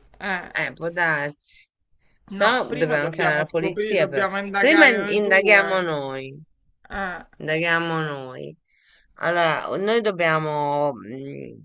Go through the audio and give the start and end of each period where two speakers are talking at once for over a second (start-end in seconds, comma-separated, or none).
2.3-5.9